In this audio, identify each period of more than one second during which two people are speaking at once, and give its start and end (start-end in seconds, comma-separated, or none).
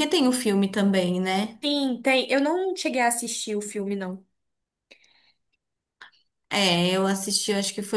none